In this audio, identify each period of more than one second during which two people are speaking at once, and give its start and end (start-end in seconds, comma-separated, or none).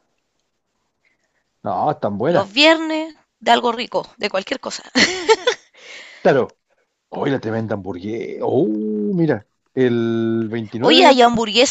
none